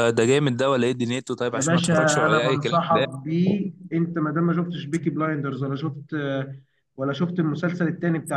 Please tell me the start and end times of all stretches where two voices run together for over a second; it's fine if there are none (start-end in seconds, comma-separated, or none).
1.5-3.1